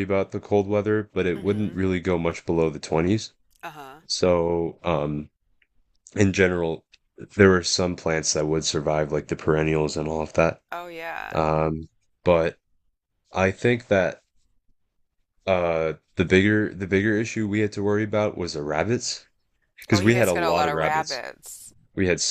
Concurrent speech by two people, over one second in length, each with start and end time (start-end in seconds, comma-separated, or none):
19.9-21.2